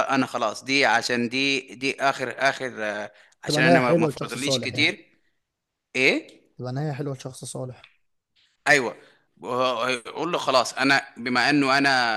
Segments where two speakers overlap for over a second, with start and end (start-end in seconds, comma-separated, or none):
3.5-4.9